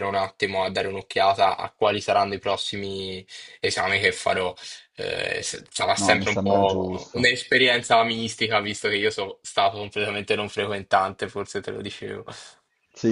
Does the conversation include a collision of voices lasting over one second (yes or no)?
yes